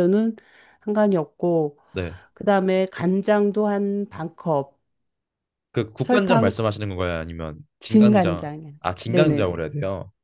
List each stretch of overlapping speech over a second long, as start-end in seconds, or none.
7.9-9.5